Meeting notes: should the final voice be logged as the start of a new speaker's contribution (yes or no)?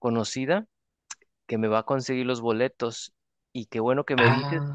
no